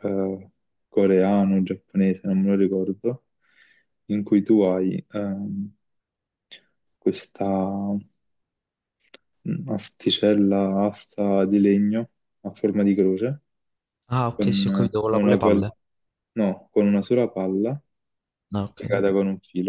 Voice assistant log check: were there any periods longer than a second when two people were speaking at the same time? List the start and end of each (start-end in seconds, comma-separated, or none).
14.3-15.6